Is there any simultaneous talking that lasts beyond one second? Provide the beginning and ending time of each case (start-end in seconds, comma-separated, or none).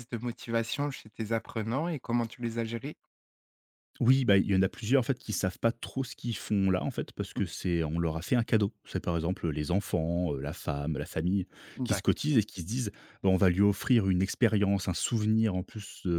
none